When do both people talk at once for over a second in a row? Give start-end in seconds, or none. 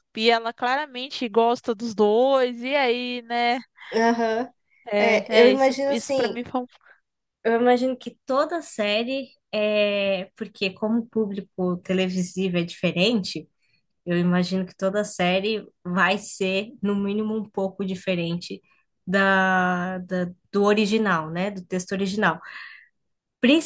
5.0-6.4